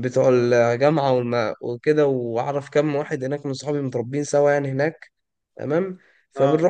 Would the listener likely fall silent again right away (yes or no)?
yes